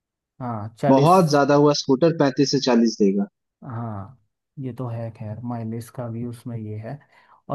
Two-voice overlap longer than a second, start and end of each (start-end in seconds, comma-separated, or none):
none